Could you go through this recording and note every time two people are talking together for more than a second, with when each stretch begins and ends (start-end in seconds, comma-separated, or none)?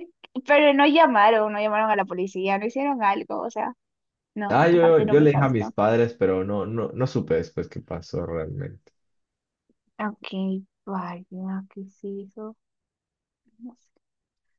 4.5-5.8